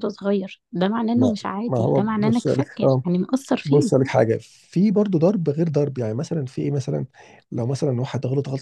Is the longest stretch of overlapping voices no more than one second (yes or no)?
no